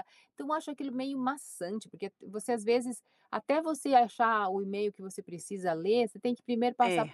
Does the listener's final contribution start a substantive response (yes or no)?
no